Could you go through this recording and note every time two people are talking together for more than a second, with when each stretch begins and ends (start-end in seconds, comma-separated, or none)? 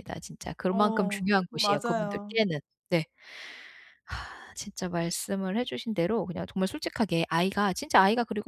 0.7-2.4